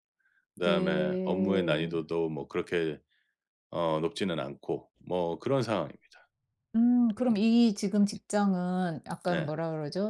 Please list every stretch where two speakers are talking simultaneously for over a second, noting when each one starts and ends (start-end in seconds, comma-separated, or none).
0.6-1.9